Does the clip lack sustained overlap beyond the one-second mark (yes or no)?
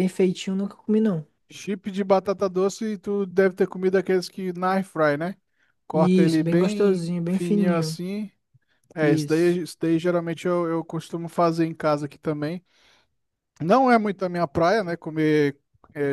no